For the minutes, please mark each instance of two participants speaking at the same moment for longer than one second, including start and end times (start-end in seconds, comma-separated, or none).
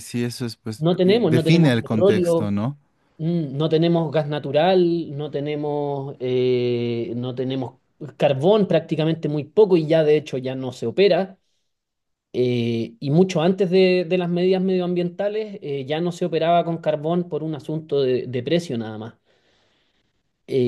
0.8-2.5